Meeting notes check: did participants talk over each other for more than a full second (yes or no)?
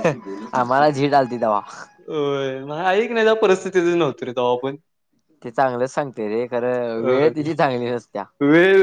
no